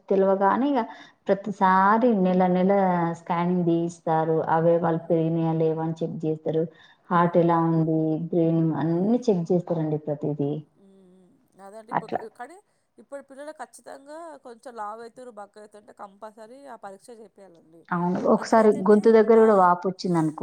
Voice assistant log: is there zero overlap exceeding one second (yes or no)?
yes